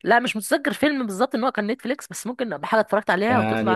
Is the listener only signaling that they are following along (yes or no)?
no